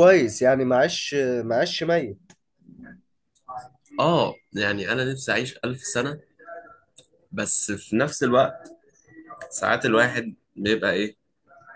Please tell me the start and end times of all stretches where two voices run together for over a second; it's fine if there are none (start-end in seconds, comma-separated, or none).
none